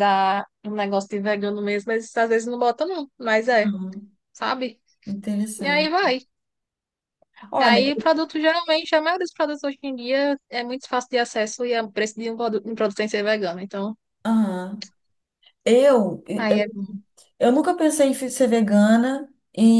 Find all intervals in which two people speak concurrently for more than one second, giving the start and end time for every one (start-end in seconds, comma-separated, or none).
none